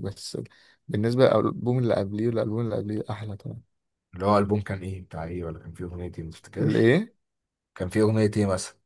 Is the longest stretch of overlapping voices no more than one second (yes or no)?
yes